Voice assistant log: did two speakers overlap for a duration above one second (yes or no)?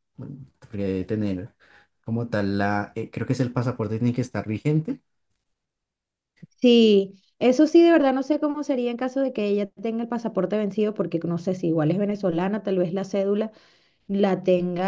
no